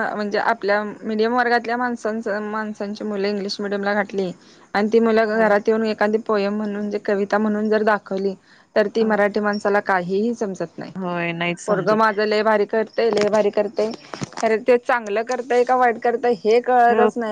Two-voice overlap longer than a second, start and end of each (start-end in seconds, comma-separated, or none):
none